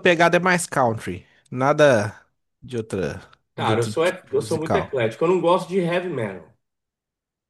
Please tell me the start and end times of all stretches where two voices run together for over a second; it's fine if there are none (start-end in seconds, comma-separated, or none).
3.6-5.0